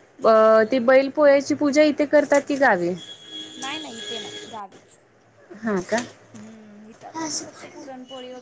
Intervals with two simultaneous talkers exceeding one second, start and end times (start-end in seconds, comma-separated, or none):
none